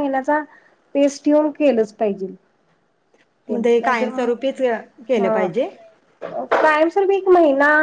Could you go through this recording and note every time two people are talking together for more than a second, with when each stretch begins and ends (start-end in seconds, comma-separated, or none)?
3.5-5.5